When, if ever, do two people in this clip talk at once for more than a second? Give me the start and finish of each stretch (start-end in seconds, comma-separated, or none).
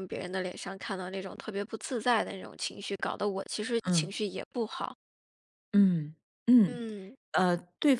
none